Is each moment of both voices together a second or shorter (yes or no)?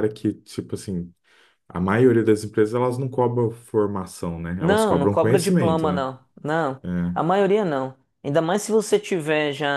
no